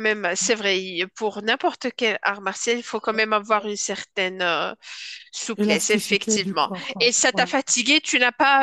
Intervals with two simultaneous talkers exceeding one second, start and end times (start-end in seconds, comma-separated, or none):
5.5-7.5